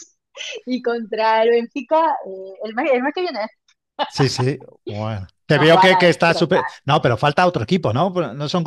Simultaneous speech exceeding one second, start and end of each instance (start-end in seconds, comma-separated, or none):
5.5-6.8